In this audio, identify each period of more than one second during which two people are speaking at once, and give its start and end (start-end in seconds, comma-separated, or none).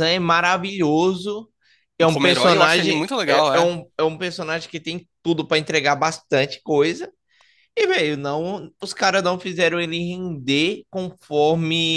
2.1-3.7